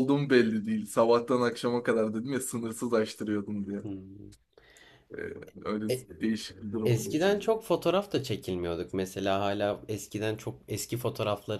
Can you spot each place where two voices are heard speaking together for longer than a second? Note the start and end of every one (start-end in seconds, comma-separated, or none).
none